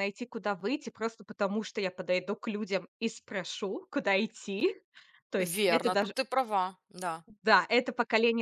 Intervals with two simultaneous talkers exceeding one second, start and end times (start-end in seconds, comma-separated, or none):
none